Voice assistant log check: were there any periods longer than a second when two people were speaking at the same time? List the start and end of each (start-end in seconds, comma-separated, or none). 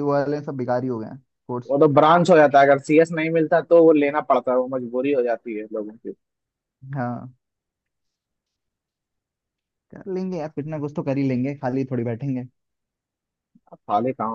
none